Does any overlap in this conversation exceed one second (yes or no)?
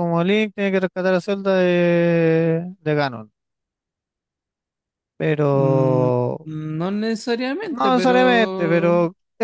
yes